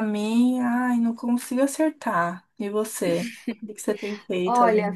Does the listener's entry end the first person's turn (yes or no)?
yes